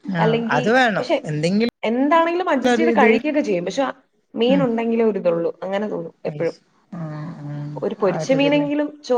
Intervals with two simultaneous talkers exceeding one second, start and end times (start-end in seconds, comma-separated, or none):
none